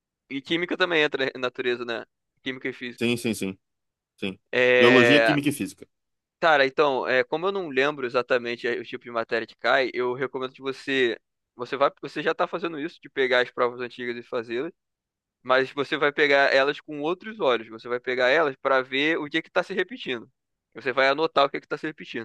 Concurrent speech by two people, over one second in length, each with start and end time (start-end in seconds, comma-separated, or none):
none